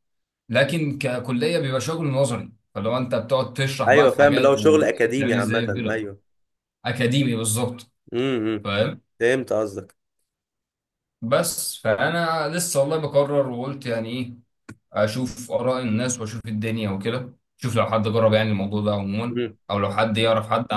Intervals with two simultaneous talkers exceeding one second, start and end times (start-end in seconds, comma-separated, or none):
3.9-6.1